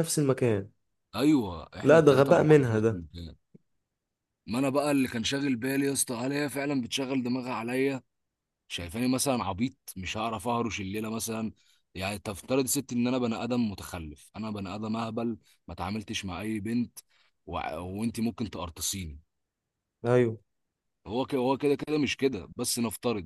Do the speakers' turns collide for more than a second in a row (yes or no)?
yes